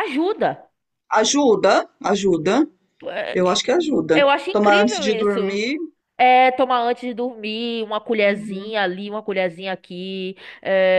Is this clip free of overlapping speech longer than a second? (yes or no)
no